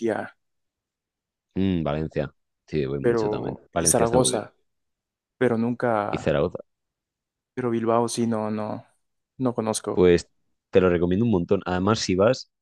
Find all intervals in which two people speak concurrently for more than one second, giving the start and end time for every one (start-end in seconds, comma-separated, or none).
3.0-4.5